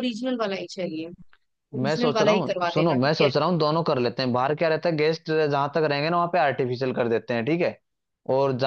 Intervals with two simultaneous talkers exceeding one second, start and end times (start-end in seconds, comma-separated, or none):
1.8-3.3